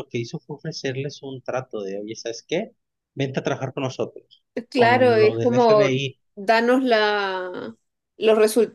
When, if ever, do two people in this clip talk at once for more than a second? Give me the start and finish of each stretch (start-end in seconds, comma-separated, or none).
4.7-6.2